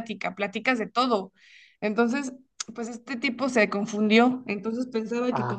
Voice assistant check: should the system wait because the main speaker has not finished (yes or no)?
yes